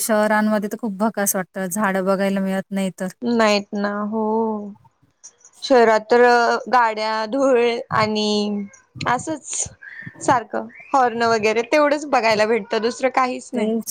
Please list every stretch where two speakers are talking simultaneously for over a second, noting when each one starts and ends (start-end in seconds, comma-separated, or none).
none